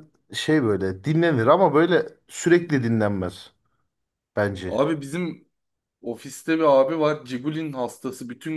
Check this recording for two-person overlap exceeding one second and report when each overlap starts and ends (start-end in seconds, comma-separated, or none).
none